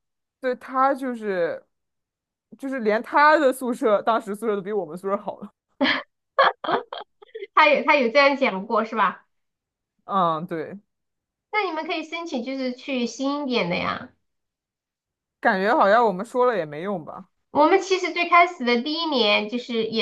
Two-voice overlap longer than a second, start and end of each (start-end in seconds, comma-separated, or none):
none